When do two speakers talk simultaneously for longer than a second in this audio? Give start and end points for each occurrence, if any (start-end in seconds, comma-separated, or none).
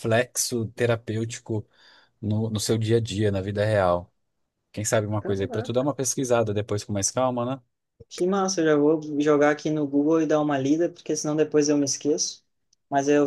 none